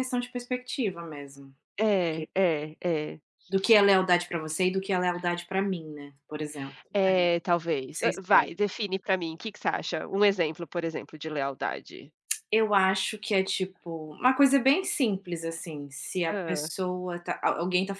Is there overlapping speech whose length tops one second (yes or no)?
no